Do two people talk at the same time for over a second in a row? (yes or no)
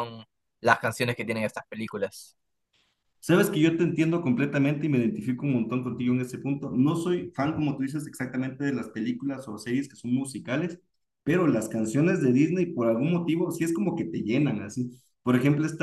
no